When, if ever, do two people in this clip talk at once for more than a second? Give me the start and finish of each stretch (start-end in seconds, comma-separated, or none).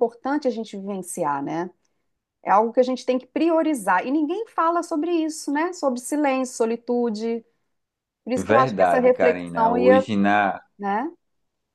8.4-10.1